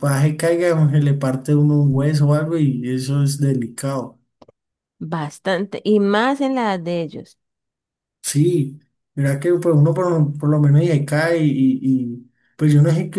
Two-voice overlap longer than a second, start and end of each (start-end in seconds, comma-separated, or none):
none